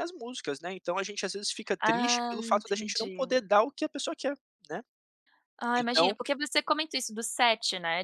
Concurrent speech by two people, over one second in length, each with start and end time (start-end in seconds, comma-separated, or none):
1.8-3.4